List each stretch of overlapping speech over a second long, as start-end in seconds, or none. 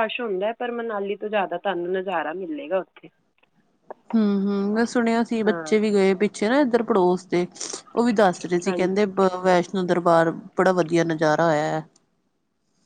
none